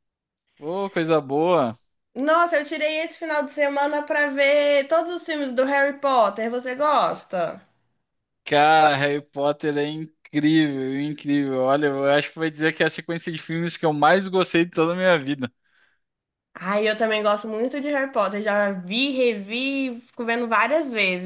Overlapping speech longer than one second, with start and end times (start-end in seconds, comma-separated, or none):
none